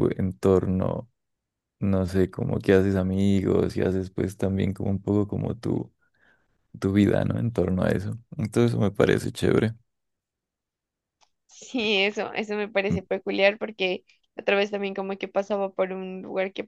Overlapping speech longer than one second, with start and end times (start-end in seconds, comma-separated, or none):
none